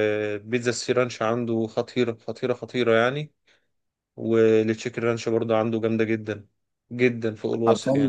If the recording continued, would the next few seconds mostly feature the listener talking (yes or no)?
yes